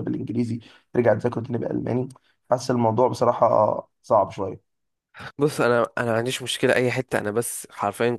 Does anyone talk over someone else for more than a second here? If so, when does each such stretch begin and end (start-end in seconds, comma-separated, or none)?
none